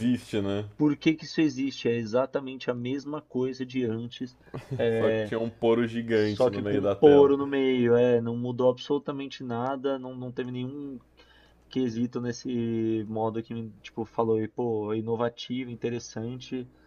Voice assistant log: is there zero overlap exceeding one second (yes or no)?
no